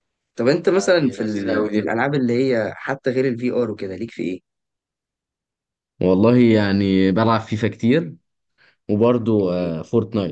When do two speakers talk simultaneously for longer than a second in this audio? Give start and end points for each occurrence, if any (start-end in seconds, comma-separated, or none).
0.7-1.9